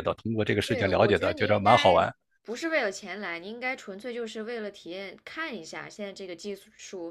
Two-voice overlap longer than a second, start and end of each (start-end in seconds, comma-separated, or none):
0.6-2.0